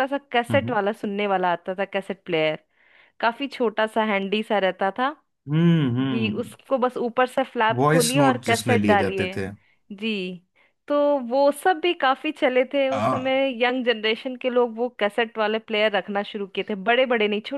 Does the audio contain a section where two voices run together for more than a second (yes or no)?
yes